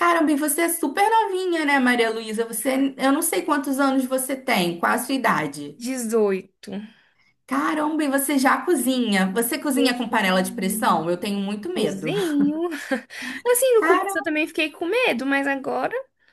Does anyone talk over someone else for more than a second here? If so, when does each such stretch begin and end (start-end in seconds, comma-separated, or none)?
9.7-11.1